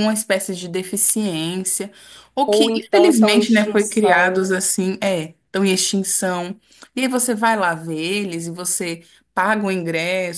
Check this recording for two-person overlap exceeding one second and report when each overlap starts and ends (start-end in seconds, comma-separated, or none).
2.5-4.6